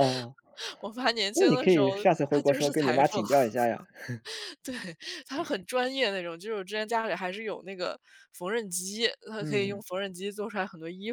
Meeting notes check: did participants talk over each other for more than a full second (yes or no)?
yes